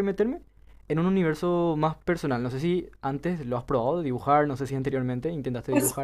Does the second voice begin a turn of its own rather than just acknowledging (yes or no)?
yes